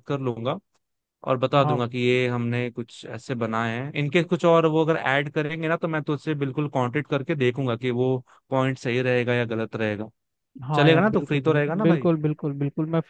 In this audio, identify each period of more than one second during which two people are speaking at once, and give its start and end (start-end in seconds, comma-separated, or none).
10.8-12.1